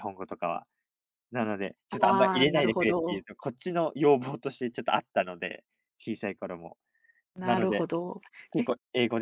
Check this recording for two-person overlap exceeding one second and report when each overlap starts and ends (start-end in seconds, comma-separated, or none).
2.0-3.2